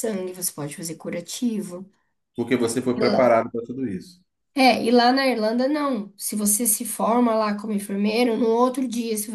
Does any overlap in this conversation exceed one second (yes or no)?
no